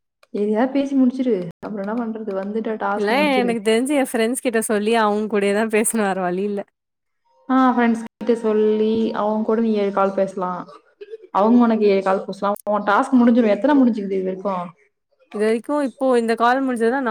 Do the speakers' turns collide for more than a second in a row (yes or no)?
no